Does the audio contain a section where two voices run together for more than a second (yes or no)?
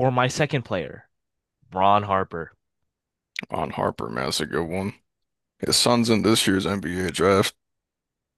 no